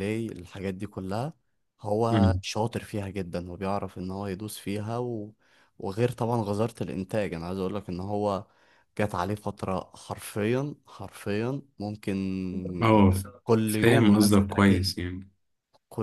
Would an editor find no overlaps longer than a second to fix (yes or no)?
no